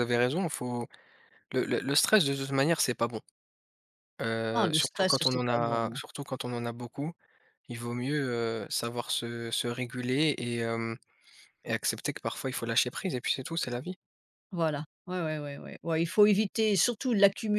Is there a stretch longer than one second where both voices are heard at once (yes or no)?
yes